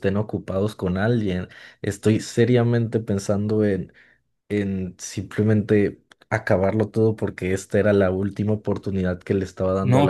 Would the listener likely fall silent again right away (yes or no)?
no